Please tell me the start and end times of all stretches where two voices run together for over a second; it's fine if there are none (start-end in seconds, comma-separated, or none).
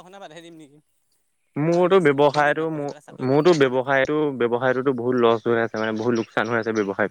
1.7-3.8